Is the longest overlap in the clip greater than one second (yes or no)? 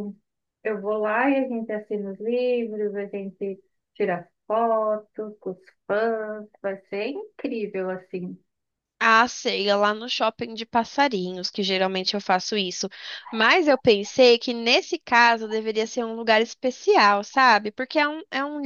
no